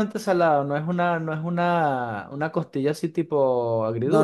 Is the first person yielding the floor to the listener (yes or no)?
yes